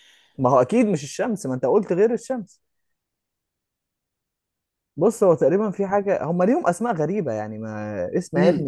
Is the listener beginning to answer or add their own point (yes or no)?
no